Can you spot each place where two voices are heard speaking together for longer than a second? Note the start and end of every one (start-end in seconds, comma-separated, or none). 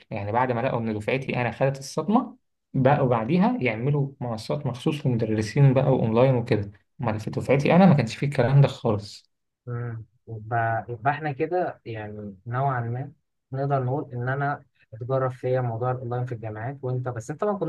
none